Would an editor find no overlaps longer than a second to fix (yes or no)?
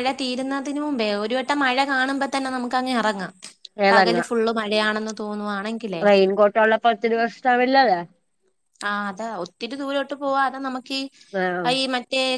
yes